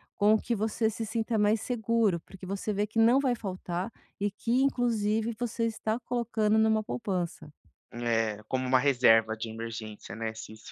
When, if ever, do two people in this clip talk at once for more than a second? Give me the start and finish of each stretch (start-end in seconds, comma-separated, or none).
none